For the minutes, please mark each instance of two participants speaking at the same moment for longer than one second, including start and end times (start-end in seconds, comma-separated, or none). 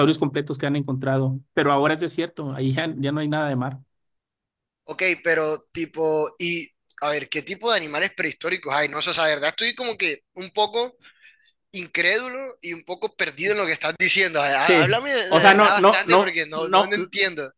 14.6-16.9